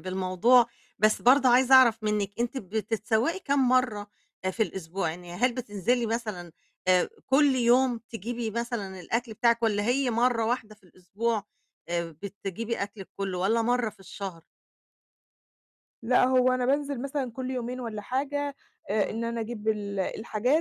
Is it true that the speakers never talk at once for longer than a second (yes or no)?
yes